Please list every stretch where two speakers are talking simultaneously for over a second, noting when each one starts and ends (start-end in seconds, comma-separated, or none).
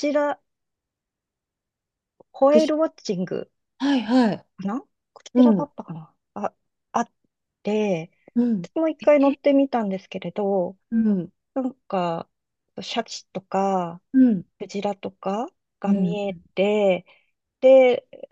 none